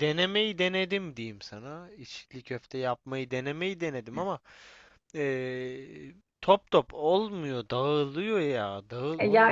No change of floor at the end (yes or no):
no